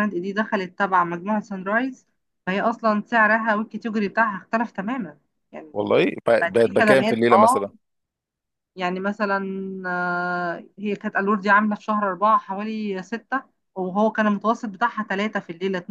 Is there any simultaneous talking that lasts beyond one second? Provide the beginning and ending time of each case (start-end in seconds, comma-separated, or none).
6.4-7.6